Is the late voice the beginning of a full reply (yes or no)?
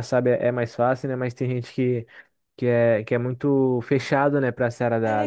yes